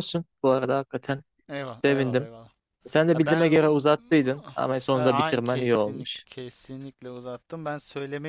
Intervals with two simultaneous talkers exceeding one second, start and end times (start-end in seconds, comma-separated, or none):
4.9-6.2